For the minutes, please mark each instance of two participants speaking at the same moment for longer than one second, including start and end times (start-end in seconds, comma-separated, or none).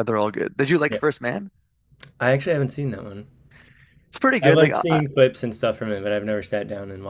none